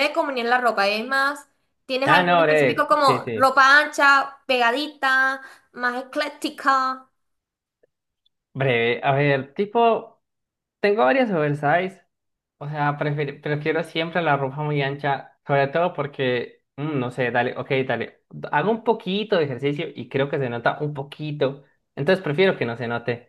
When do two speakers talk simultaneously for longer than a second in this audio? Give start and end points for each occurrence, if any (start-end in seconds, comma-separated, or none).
2.0-3.5